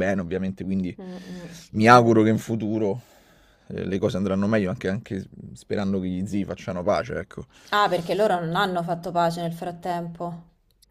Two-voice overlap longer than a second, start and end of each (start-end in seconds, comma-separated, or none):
none